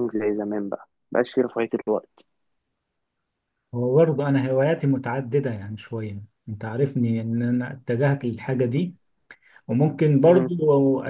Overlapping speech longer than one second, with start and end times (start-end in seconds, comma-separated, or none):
none